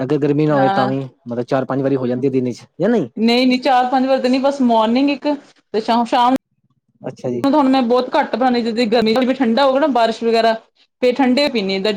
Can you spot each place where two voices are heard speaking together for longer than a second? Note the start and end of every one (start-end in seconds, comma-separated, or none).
none